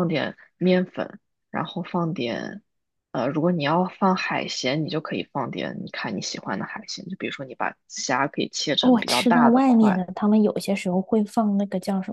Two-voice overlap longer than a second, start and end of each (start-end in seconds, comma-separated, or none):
8.8-10.1